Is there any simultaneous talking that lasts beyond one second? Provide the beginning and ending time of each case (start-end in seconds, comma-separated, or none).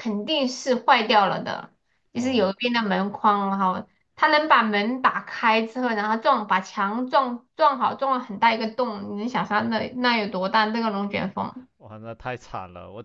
none